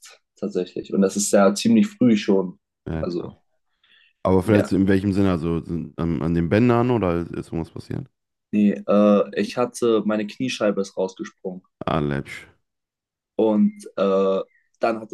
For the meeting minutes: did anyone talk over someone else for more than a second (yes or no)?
no